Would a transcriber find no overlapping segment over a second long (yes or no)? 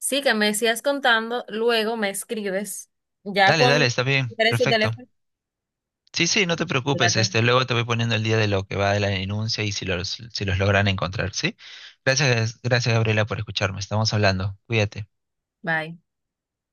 no